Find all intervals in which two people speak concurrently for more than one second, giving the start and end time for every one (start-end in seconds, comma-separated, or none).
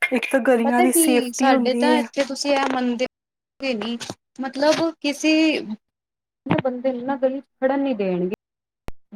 0.6-2.0